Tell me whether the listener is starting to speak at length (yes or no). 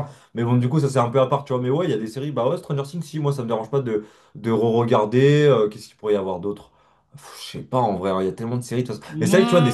no